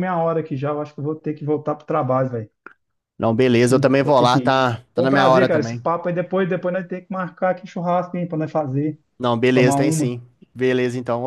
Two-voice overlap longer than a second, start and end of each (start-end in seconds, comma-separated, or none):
3.5-5.8